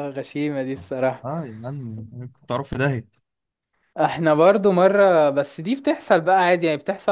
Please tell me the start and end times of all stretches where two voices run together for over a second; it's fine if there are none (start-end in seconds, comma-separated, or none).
none